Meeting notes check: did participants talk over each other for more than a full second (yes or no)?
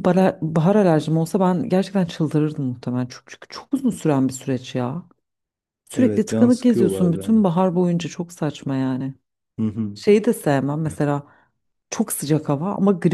yes